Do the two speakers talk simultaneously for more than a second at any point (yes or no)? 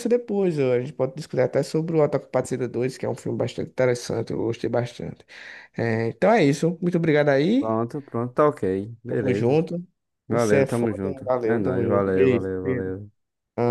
yes